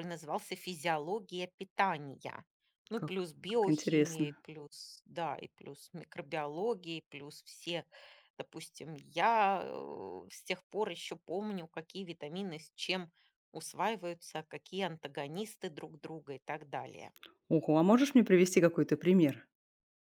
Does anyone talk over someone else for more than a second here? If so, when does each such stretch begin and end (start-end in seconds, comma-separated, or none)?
2.9-4.4